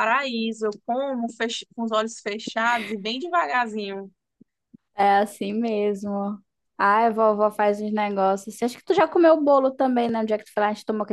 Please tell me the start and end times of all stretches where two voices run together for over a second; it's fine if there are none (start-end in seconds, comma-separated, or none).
none